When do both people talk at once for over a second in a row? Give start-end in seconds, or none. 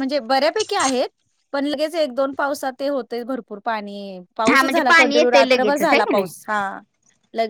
4.5-6.3